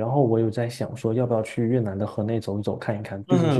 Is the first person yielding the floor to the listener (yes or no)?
yes